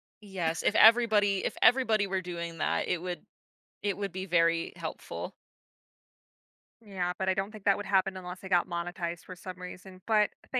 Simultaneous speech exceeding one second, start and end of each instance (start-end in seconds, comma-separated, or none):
none